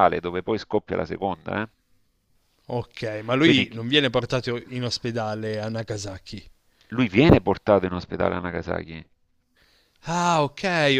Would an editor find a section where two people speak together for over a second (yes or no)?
no